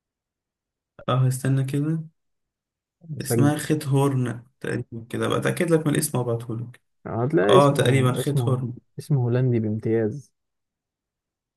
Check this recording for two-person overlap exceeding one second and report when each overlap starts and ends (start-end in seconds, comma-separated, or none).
7.5-8.7